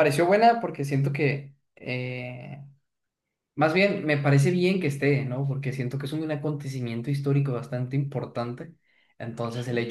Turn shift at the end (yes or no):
no